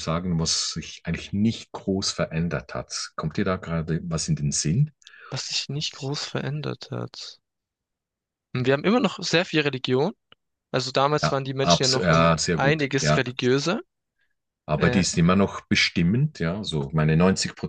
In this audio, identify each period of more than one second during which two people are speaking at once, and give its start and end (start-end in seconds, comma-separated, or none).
11.2-13.2